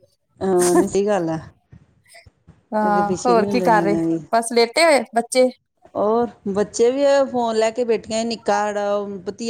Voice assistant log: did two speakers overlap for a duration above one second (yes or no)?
no